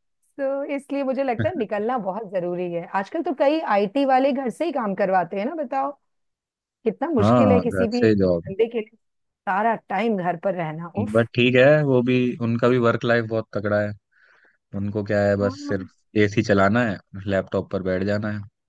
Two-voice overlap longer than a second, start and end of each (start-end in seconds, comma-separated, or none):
7.2-8.5